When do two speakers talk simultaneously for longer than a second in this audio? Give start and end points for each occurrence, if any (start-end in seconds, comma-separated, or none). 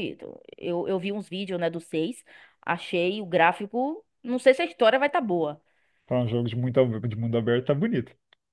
none